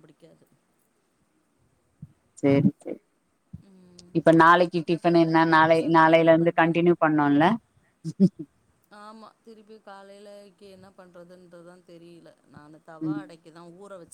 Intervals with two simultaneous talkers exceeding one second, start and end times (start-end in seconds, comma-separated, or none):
5.1-6.8